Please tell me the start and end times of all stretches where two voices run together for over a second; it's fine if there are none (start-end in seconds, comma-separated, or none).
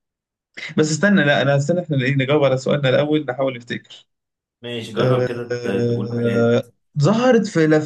5.0-6.5